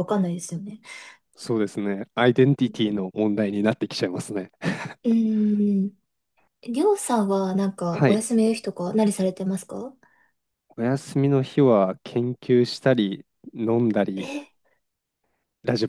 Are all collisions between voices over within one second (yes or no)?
yes